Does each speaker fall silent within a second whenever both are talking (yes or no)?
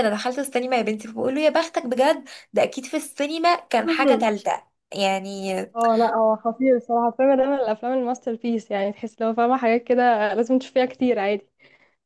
yes